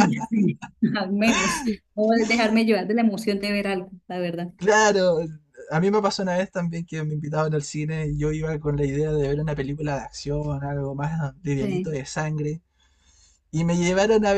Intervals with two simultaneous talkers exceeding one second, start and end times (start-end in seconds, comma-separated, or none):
none